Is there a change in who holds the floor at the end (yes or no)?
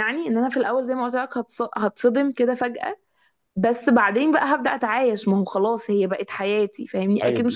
yes